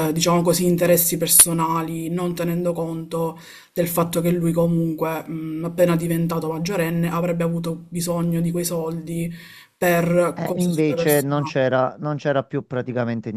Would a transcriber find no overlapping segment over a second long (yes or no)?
no